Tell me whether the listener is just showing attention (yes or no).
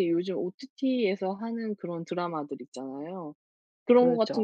yes